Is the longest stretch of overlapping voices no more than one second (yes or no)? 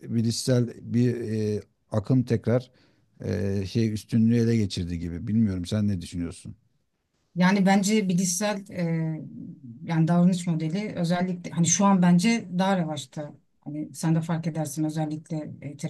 yes